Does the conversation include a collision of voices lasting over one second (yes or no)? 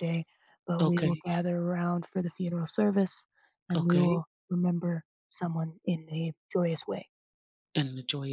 no